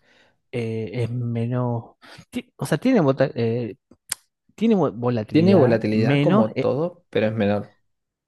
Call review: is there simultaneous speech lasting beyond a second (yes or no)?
yes